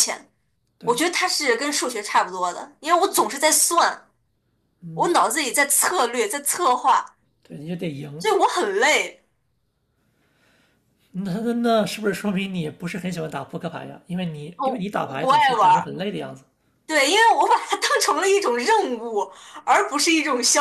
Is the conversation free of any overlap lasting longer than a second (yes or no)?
no